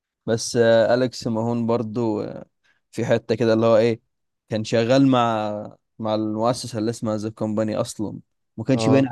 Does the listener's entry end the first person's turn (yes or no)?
no